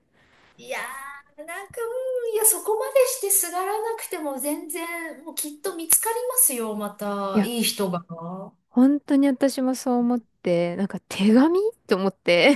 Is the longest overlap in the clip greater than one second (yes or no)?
no